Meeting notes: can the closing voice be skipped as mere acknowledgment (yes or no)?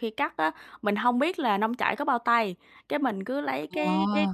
yes